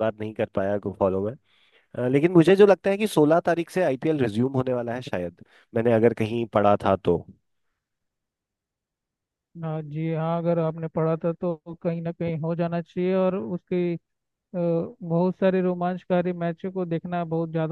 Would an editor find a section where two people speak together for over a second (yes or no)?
no